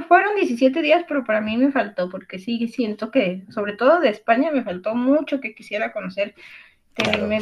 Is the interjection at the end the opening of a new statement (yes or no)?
no